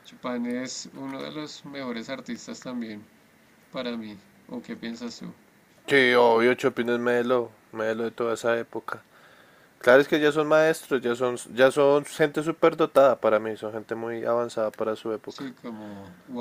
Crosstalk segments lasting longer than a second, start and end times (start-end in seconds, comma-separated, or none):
none